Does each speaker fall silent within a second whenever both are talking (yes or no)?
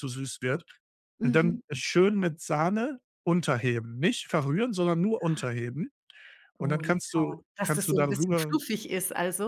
no